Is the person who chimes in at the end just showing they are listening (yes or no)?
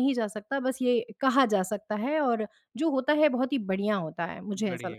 no